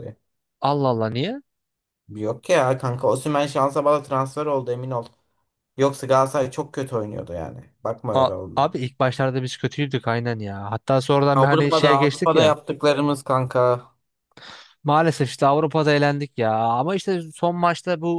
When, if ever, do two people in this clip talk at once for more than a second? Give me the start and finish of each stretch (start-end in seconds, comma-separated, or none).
11.3-12.6